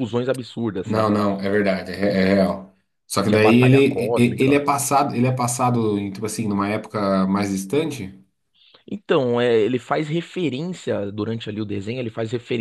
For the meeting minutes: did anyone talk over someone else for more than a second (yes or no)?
yes